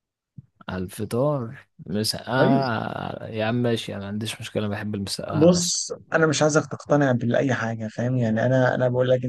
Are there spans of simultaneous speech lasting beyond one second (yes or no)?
no